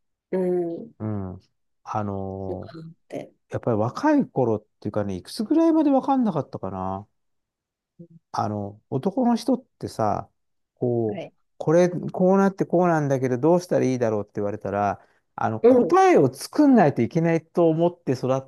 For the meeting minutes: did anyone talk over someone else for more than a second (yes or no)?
no